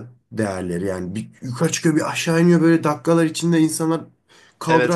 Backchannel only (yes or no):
yes